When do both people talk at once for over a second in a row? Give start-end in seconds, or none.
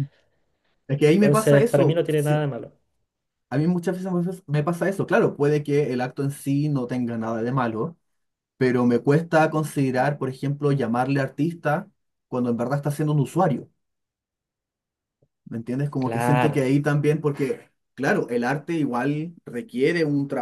1.2-2.5